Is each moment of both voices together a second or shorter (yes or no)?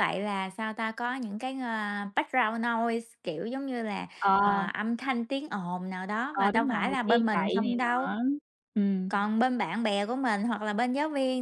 no